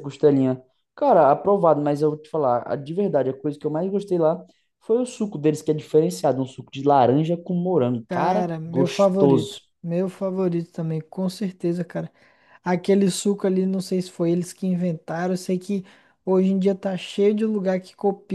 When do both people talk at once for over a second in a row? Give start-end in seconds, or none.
8.1-9.6